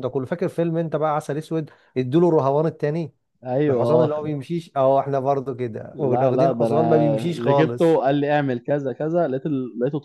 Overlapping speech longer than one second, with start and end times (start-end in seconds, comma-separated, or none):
5.9-8.0